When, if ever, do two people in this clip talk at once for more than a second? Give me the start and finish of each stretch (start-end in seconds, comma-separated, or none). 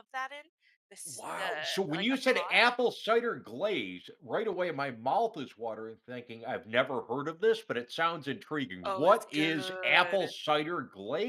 1.1-2.7, 8.8-10.3